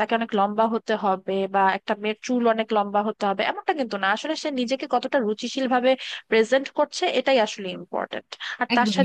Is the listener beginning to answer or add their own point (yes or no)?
no